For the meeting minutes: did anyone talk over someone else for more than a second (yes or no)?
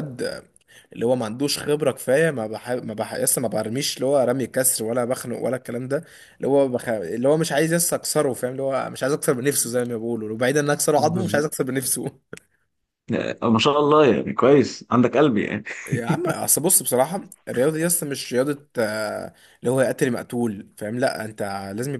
no